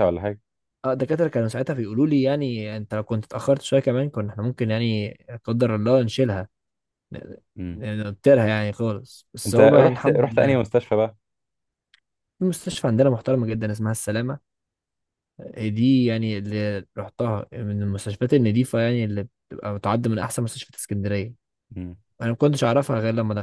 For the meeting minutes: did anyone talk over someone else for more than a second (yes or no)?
yes